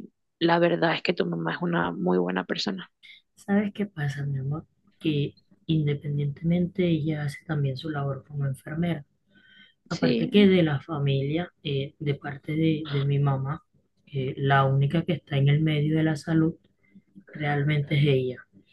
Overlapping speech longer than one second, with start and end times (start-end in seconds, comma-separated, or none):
none